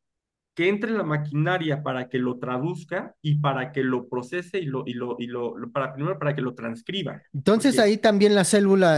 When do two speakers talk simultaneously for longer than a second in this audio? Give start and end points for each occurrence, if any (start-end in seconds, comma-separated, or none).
none